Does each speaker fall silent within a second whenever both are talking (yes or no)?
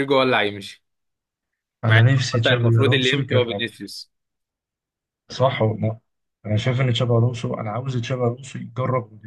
no